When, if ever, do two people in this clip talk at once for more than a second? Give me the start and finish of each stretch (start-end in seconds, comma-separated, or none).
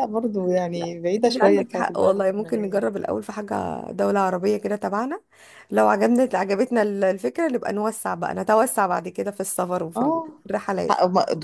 0.7-2.9